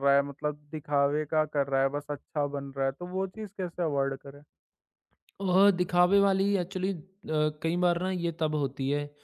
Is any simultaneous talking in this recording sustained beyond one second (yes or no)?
no